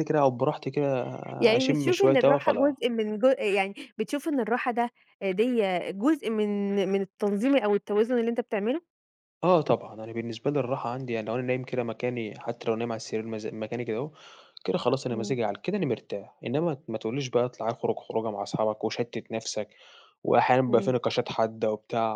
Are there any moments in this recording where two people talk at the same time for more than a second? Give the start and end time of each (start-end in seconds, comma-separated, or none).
1.6-2.8